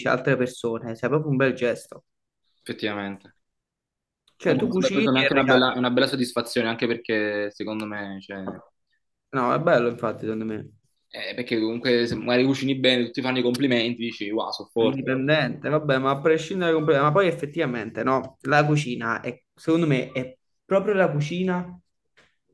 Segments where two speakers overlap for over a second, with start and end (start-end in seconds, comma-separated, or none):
4.5-5.7